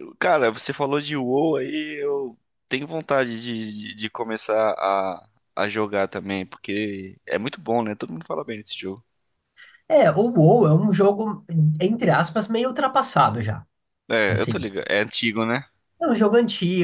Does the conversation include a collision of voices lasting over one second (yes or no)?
no